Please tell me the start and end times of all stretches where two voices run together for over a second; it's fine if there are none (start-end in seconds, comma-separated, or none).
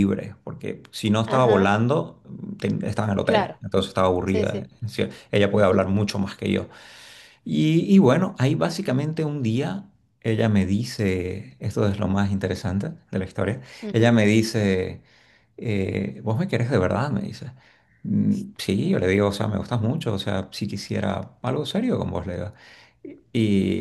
none